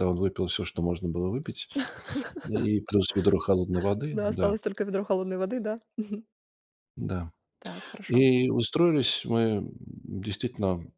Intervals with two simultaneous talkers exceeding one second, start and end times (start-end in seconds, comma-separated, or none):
none